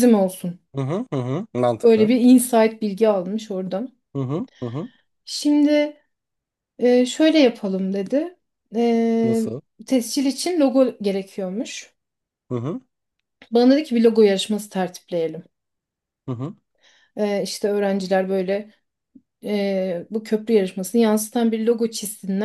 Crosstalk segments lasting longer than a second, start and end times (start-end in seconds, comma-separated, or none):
none